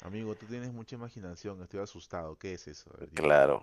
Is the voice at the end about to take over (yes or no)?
yes